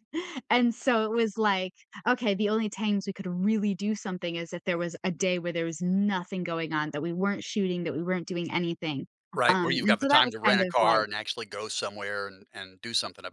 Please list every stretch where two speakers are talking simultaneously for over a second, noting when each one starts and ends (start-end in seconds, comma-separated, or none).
9.5-11.0